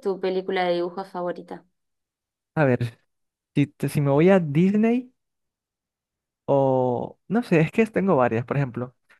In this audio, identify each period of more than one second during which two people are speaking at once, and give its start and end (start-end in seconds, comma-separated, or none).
none